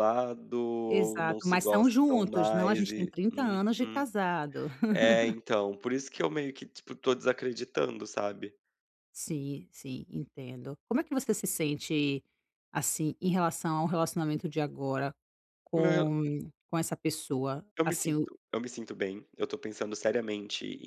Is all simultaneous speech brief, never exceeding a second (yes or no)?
no